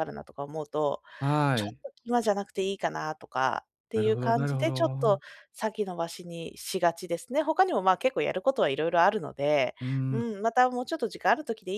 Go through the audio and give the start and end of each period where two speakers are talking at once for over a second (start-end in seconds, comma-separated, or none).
3.9-5.2